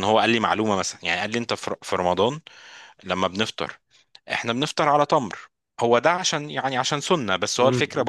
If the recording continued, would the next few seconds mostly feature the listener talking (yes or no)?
no